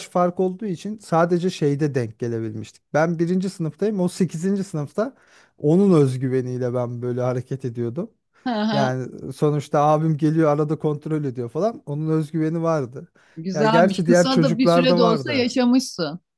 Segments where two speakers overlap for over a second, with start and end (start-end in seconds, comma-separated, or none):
13.5-15.5